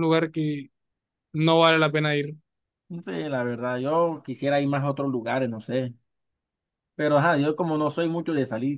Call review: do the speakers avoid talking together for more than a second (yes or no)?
yes